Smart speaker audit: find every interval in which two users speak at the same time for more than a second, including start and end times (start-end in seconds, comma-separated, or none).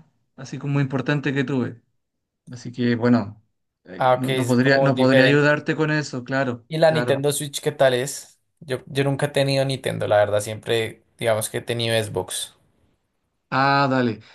4.0-5.5